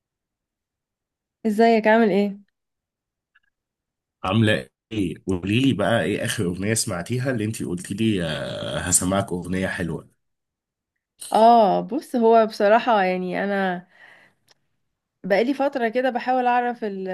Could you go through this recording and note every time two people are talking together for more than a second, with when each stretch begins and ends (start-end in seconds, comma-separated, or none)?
none